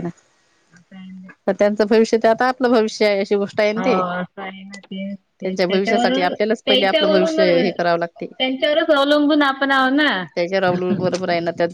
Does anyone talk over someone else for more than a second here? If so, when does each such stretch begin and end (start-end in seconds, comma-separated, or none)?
5.5-7.4